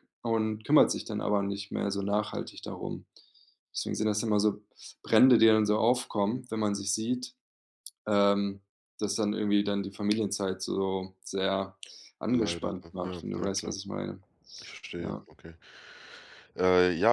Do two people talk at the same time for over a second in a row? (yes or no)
yes